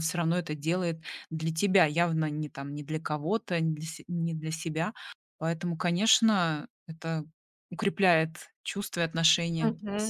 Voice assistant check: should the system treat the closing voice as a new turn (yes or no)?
yes